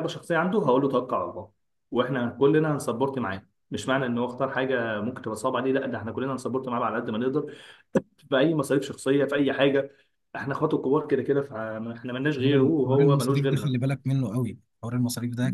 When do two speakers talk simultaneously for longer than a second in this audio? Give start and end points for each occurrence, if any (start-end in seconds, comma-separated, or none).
12.4-13.8